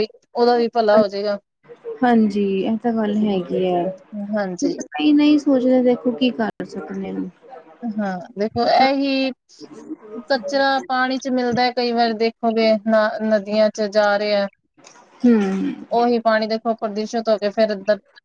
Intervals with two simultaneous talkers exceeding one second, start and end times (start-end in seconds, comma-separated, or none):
none